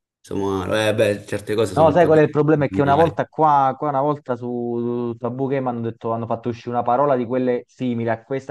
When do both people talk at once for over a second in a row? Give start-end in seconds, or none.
1.8-3.2